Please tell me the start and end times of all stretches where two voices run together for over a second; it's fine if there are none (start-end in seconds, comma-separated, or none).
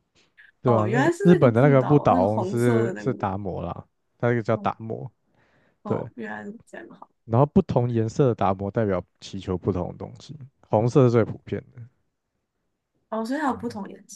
0.7-3.4